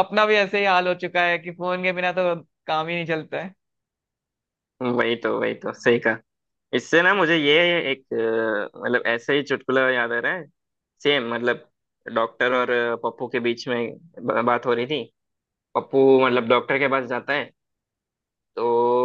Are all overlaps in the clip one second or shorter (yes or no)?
yes